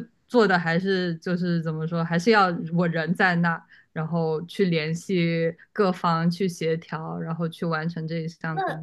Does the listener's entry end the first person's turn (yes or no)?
yes